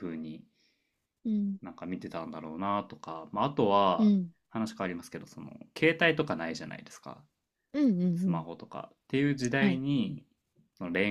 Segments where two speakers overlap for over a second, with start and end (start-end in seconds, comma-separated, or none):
none